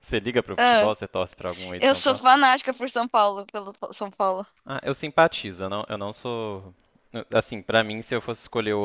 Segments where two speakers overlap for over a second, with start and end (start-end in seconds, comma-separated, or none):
none